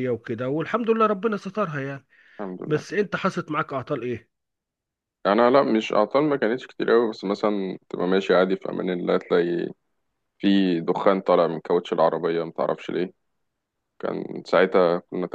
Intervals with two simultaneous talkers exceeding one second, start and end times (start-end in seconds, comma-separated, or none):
none